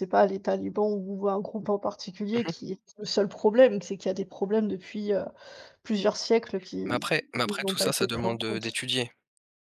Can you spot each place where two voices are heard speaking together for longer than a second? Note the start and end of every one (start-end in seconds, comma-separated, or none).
6.9-8.8